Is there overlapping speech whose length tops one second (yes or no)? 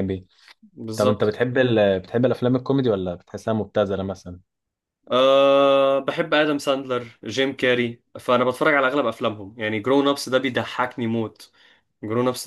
no